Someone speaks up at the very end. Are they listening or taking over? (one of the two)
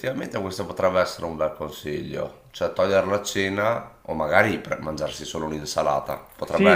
taking over